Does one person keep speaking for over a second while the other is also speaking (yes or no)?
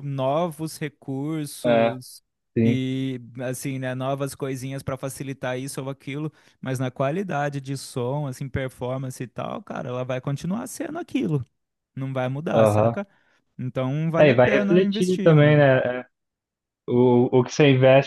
yes